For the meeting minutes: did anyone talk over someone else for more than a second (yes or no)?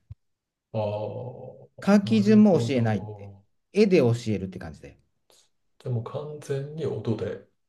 yes